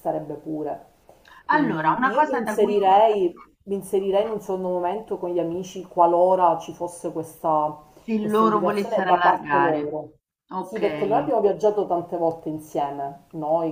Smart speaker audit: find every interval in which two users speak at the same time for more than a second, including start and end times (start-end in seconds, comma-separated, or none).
1.5-2.8, 8.2-9.9